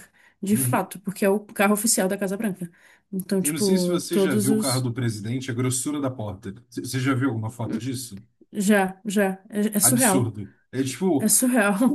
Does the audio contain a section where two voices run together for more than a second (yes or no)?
yes